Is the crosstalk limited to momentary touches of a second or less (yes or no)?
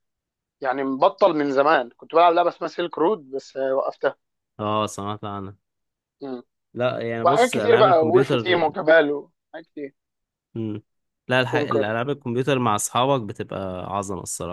no